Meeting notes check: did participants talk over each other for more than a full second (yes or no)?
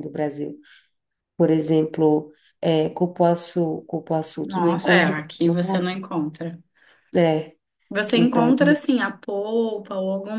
yes